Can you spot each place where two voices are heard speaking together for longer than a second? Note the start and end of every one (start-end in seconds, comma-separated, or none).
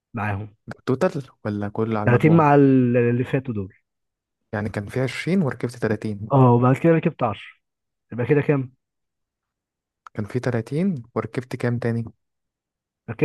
none